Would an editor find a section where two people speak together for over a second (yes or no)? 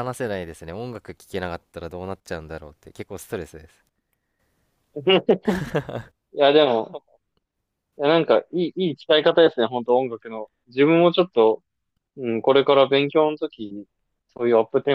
no